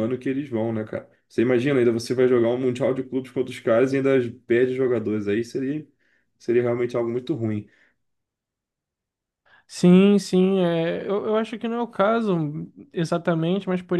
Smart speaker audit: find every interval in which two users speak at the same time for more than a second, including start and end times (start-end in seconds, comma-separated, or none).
none